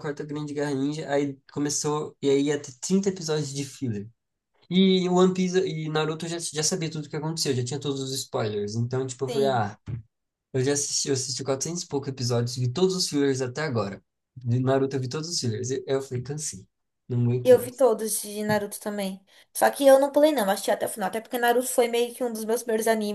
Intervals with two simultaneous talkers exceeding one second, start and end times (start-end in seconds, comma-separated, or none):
none